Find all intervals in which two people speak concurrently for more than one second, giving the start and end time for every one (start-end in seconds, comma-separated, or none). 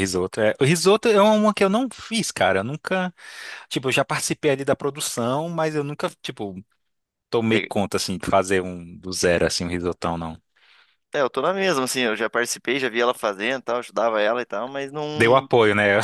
none